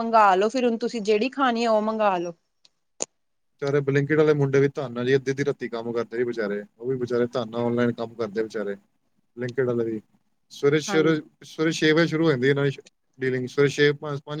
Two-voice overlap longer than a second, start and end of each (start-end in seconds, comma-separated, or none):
none